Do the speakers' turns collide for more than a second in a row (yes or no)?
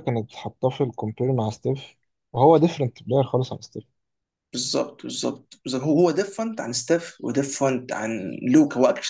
no